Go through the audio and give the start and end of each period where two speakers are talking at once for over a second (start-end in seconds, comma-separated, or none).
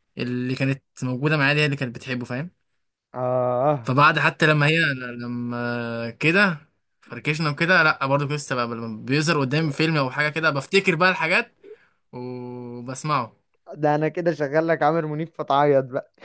none